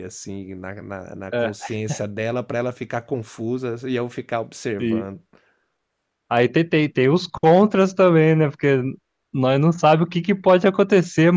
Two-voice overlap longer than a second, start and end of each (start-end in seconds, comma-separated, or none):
none